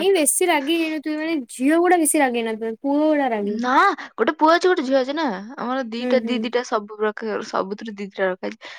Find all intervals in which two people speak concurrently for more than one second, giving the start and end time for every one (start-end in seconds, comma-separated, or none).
none